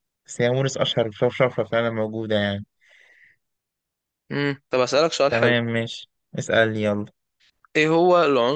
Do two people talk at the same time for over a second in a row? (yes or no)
no